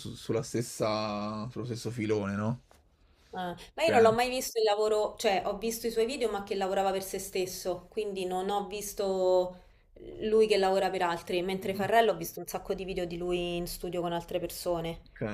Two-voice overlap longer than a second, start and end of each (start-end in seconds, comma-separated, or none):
none